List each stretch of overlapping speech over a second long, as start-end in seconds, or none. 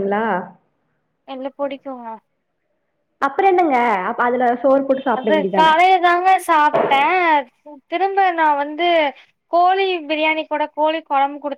none